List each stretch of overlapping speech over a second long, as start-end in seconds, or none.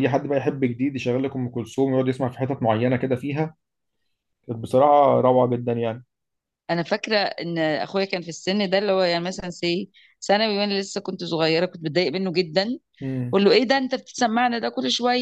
none